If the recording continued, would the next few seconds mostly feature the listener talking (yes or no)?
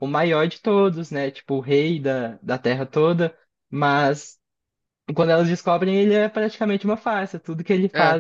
no